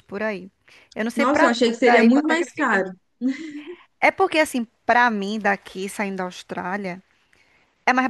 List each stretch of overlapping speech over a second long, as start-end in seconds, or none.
1.1-2.9